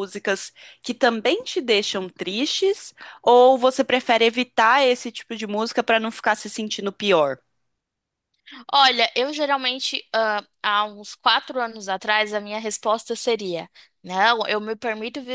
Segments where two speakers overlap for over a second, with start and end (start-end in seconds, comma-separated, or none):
none